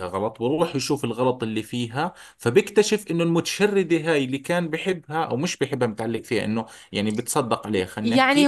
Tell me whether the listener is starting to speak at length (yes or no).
yes